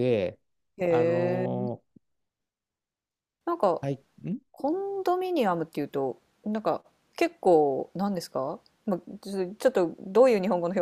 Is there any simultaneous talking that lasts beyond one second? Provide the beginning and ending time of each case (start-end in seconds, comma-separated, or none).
none